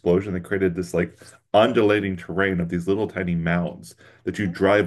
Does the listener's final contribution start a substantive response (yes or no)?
no